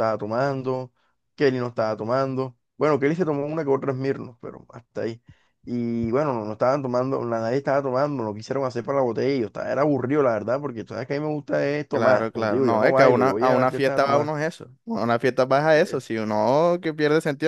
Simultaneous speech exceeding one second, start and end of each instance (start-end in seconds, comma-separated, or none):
11.9-14.3